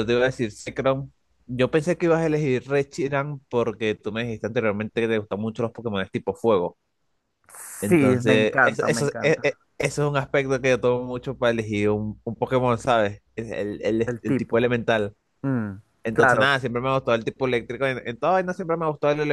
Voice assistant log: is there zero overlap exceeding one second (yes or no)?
no